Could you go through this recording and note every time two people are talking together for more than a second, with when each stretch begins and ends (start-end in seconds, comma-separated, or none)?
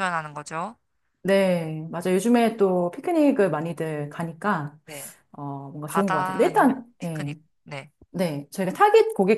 5.9-7.3